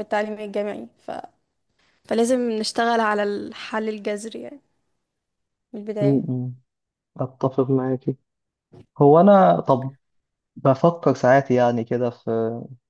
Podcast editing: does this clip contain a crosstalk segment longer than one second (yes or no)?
no